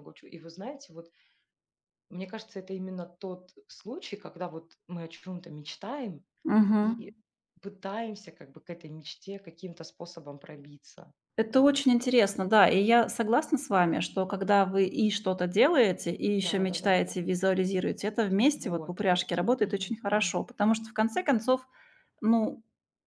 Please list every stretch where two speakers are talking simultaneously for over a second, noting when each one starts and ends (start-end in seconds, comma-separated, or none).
18.5-20.4